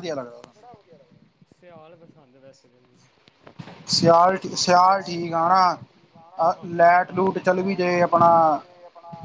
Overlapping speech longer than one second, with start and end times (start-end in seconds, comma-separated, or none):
5.0-8.1